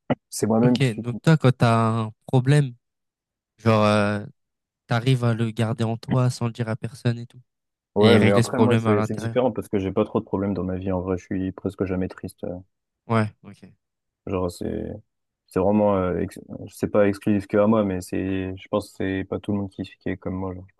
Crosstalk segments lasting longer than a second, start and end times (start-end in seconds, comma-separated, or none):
8.0-9.4